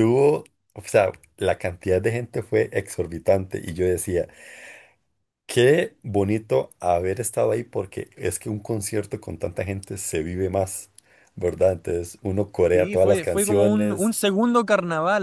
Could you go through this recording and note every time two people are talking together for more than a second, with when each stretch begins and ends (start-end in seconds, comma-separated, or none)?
12.7-14.1